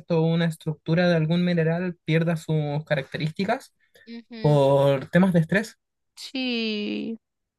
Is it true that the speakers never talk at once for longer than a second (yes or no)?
yes